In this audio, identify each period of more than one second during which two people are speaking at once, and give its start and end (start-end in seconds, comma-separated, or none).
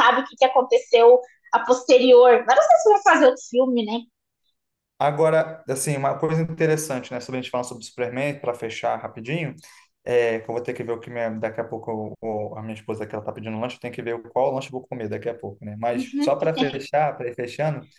none